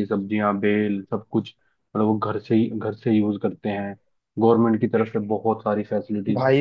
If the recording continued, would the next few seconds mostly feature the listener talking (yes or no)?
yes